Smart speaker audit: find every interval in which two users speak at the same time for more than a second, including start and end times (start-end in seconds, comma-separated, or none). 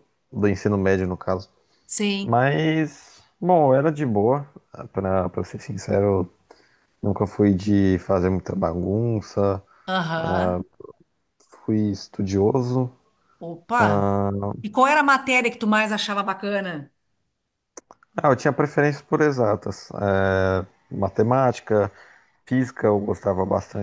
none